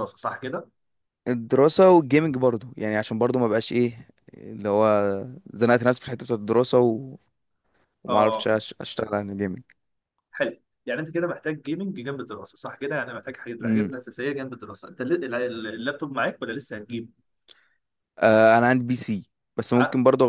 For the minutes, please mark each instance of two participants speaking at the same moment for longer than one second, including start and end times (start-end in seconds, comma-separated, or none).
none